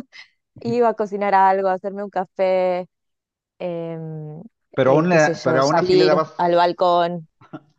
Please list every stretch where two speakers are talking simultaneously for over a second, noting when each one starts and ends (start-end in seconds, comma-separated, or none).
4.8-6.3